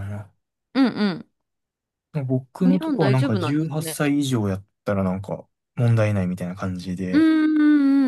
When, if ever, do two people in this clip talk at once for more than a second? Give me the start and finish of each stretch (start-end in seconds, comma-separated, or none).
2.7-4.0